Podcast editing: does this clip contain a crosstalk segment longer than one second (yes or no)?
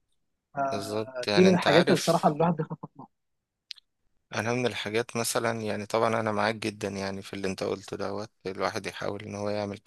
yes